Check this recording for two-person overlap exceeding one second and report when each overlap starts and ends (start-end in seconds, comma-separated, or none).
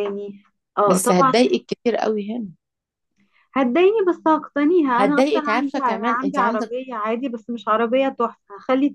5.0-6.7